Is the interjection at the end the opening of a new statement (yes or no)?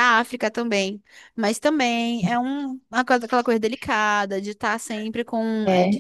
yes